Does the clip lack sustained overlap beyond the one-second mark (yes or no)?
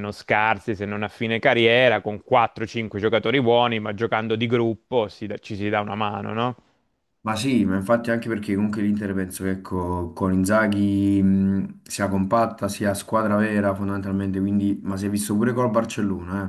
yes